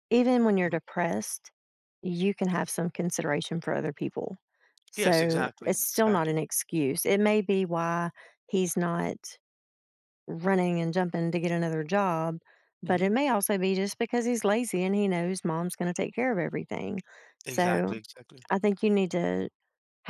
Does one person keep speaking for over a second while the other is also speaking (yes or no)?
yes